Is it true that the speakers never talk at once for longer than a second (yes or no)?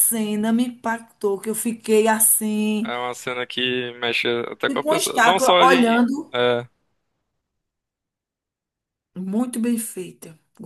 no